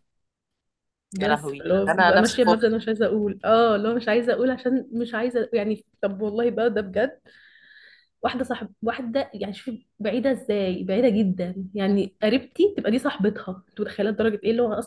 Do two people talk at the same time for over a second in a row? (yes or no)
yes